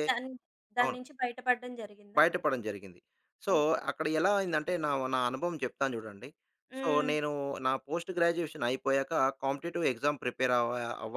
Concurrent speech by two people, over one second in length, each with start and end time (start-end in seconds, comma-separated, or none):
none